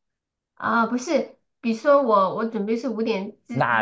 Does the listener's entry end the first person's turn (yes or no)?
yes